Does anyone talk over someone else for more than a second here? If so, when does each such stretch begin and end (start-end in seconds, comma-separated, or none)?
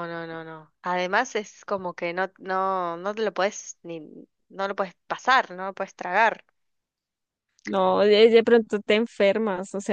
none